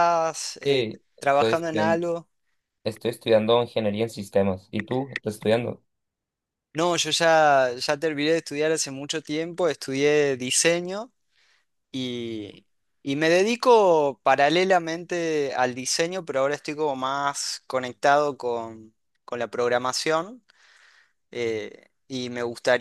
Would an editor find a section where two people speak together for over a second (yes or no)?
yes